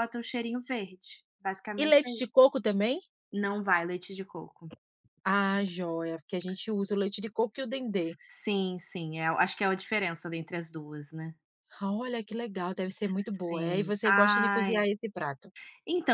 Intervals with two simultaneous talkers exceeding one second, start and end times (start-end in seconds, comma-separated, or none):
13.5-14.8